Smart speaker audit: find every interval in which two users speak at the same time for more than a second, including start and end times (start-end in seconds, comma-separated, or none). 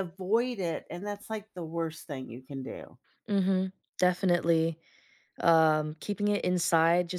none